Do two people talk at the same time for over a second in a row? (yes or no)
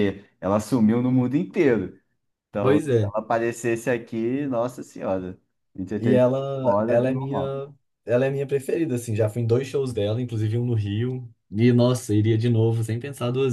yes